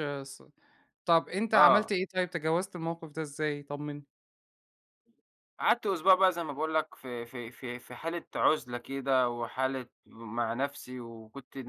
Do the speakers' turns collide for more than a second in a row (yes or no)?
no